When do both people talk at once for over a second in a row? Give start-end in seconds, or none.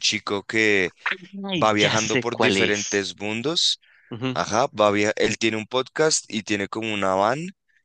1.5-3.2